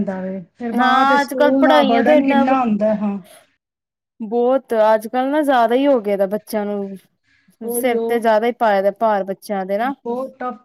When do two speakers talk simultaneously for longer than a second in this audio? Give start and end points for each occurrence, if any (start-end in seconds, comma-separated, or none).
0.8-2.4